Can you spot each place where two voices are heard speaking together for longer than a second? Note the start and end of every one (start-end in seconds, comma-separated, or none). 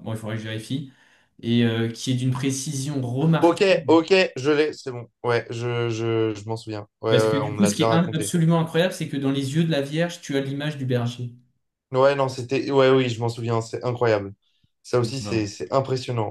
7.1-8.3